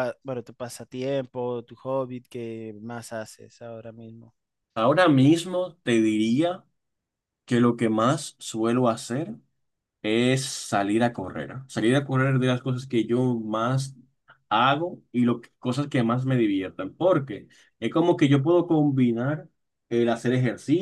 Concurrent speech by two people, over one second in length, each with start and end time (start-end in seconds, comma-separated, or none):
none